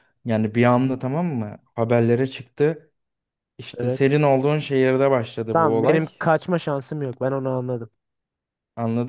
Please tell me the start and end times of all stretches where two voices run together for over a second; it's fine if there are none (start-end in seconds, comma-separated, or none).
none